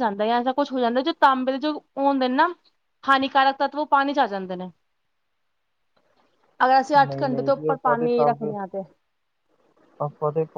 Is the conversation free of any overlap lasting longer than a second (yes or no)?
no